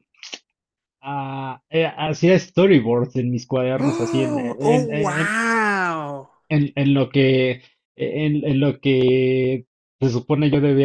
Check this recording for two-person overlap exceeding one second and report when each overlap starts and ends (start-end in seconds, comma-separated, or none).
3.8-5.3